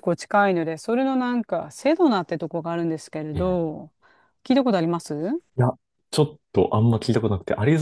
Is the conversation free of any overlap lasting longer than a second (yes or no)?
yes